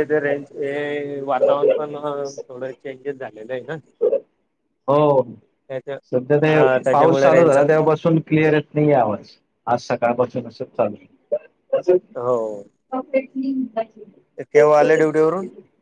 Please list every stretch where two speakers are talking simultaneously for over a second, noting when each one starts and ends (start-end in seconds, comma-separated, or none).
6.5-7.9